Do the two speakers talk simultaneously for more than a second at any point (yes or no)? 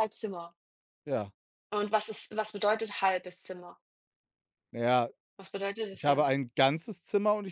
no